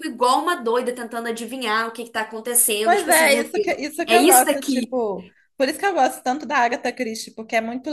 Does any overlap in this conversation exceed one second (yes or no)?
yes